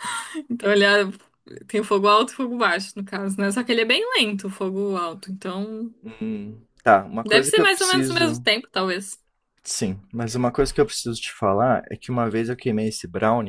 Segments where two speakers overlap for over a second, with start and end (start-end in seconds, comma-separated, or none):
7.2-8.5